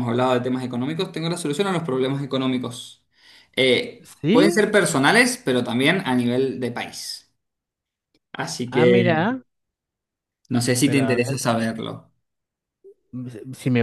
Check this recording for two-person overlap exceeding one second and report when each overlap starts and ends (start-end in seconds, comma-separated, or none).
none